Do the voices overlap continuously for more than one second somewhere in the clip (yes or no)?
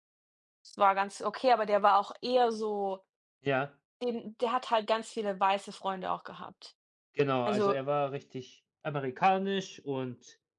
no